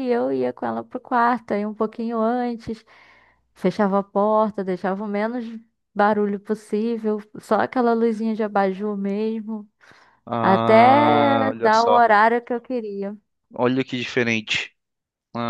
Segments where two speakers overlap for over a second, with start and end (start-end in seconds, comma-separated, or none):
10.4-12.0